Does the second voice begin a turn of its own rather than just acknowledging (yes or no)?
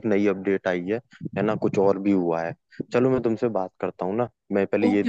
yes